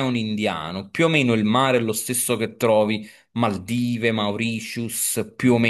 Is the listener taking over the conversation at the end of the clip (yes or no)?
no